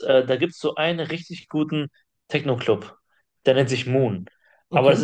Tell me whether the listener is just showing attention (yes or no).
yes